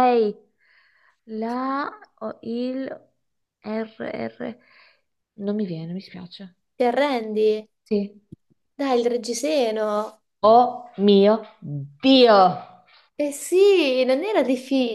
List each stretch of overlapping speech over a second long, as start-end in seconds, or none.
none